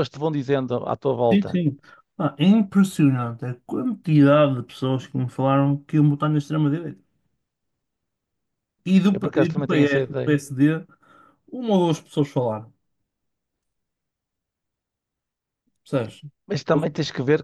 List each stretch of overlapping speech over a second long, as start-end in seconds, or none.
9.1-10.4